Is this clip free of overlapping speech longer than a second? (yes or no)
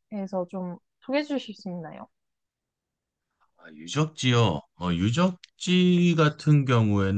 yes